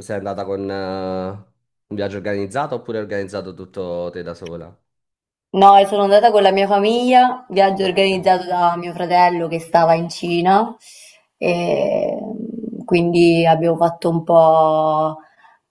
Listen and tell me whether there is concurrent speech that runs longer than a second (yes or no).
no